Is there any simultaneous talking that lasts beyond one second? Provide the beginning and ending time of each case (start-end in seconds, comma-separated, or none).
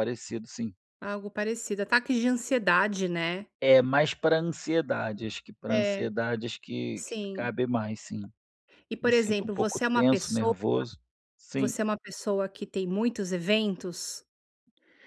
9.0-10.5